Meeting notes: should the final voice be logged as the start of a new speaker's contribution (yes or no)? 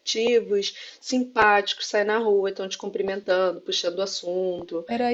yes